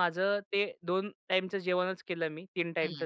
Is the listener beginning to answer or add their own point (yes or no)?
no